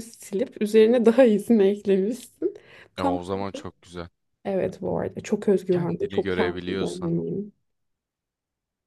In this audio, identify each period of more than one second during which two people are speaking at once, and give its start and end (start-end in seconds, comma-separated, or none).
5.7-7.1